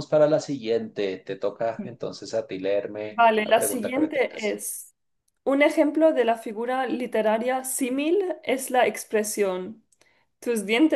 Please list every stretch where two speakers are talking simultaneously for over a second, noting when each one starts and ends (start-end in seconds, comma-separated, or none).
3.1-4.6